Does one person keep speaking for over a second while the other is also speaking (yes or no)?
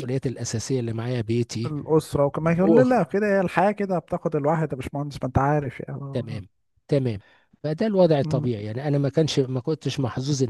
no